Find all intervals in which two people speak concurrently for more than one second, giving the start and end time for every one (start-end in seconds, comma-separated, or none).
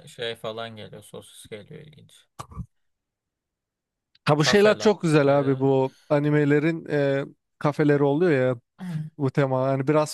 4.4-5.7